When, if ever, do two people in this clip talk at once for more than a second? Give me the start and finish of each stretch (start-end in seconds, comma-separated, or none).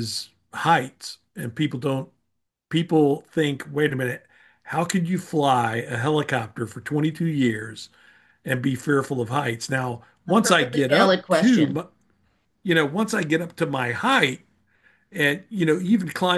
10.3-11.8